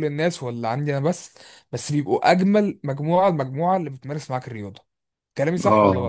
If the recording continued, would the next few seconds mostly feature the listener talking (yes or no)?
yes